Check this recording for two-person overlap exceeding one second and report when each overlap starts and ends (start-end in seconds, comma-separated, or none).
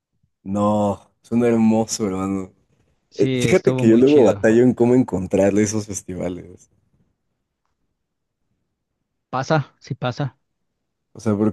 3.1-4.5